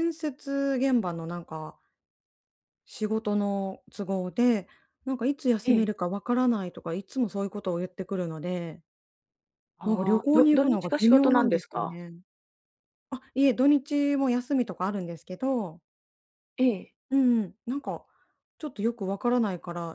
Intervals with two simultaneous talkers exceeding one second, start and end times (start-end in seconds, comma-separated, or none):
9.8-12.0